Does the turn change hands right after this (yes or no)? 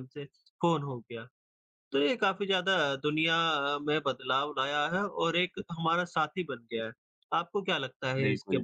yes